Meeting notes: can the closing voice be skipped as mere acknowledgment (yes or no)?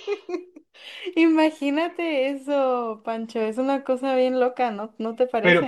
no